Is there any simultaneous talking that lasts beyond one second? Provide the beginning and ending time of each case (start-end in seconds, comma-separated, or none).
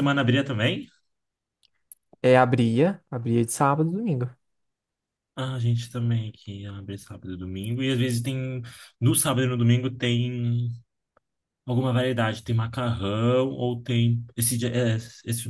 none